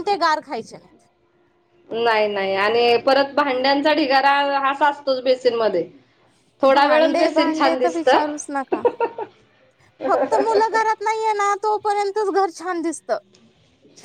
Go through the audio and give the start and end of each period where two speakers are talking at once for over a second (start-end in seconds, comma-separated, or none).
6.7-8.2